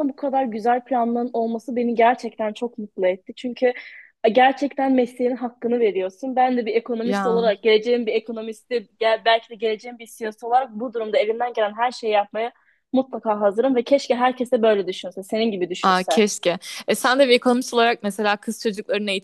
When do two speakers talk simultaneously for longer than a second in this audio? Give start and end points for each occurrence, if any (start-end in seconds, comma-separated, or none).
none